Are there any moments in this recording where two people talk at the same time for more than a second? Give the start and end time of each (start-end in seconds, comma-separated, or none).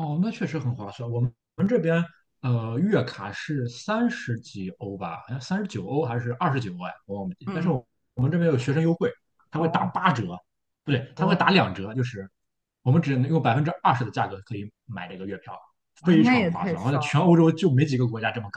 16.0-17.3